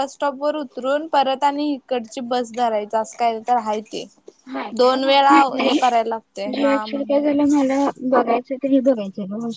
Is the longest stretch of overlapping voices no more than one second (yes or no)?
no